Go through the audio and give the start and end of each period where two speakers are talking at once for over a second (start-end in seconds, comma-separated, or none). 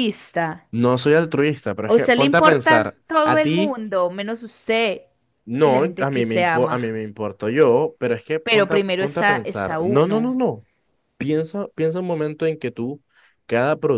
1.9-3.8, 5.6-7.0, 8.4-10.3